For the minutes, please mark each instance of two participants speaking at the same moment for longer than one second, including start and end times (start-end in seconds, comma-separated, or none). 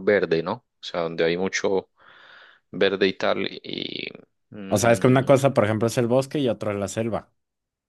none